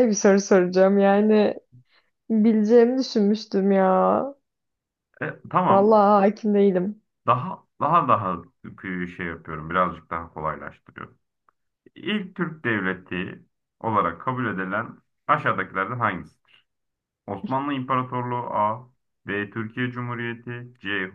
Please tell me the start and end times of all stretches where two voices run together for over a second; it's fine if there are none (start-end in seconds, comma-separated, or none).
none